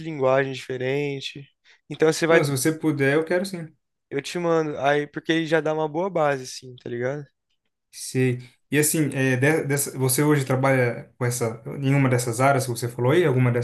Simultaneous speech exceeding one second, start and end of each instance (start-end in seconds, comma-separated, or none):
none